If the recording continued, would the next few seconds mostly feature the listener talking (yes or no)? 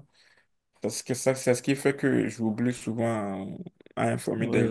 yes